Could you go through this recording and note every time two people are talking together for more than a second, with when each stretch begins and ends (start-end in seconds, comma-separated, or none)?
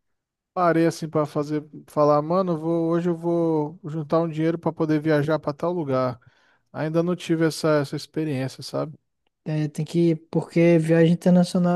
none